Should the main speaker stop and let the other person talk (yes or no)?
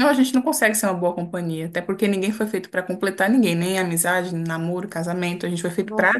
yes